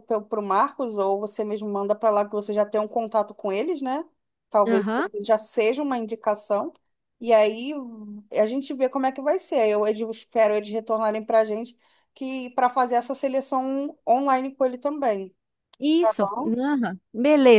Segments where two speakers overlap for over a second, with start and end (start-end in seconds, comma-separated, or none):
none